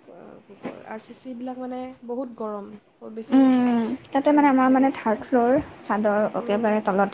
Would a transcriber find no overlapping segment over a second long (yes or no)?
yes